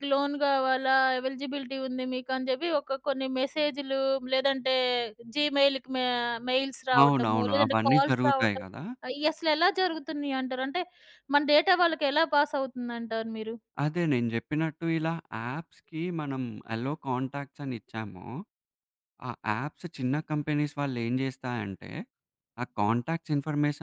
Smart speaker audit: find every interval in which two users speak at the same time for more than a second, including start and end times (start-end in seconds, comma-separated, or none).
7.0-8.6